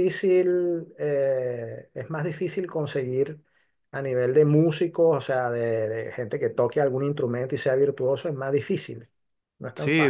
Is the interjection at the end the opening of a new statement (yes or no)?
yes